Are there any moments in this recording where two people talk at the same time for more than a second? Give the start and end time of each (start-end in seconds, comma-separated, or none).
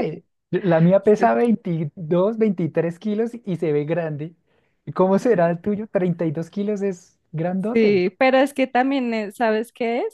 none